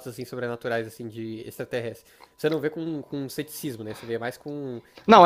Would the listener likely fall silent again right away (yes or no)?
no